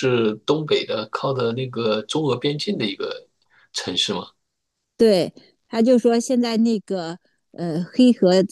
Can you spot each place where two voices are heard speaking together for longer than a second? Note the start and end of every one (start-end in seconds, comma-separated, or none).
none